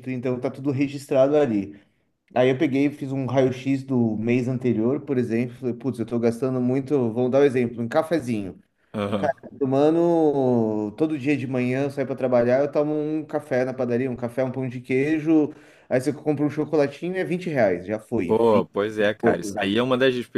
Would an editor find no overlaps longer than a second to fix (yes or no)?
no